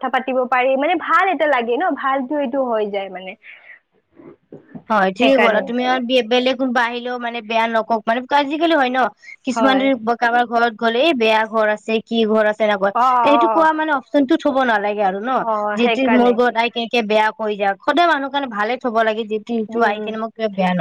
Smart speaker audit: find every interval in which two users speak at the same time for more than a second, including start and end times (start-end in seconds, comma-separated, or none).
none